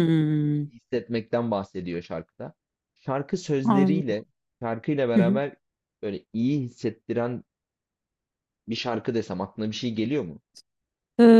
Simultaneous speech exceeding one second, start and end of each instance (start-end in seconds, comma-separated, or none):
none